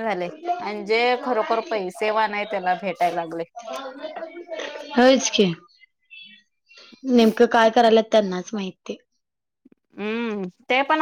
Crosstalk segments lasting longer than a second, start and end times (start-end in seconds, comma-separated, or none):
none